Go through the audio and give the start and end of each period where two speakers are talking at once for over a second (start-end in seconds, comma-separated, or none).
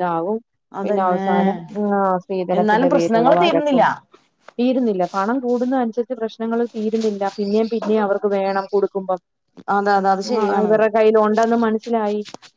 2.6-3.8